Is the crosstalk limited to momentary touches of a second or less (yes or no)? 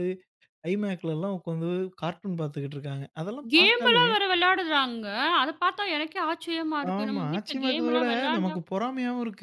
no